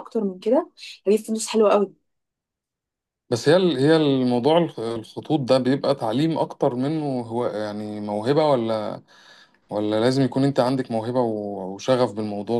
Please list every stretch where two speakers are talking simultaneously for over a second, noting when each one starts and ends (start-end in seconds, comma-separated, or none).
none